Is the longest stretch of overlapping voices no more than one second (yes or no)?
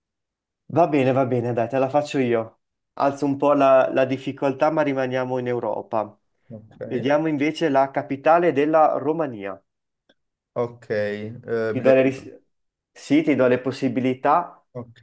yes